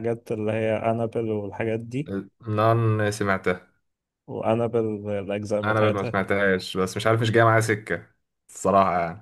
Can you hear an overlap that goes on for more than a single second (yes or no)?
no